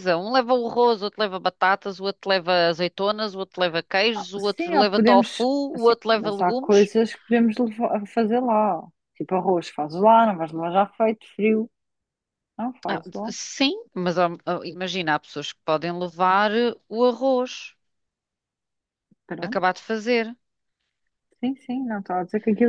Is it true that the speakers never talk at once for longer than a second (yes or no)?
no